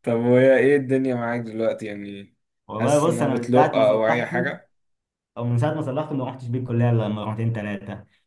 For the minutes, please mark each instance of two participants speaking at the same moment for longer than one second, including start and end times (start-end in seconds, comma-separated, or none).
2.8-4.5